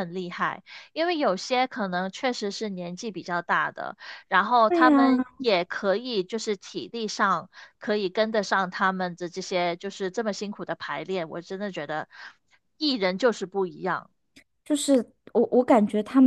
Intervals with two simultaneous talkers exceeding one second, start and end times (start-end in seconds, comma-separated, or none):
none